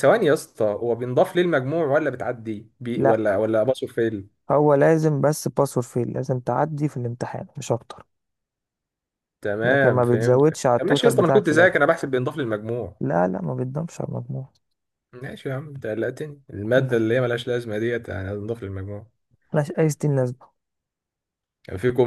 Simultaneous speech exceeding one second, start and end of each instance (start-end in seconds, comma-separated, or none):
9.6-11.8